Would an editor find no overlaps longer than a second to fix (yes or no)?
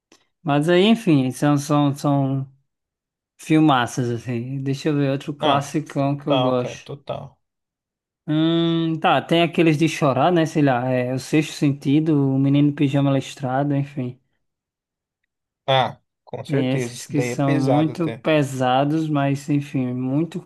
no